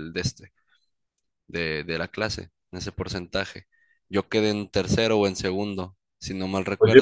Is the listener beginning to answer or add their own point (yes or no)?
yes